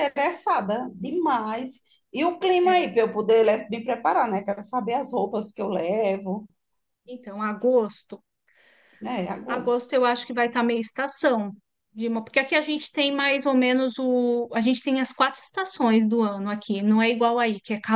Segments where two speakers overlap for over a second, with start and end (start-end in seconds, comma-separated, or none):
none